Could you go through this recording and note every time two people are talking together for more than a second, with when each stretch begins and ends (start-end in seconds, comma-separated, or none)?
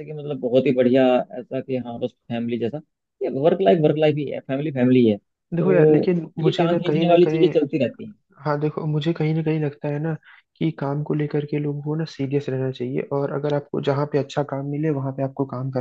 5.5-7.5